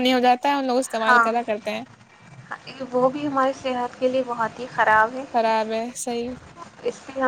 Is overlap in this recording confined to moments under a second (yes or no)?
yes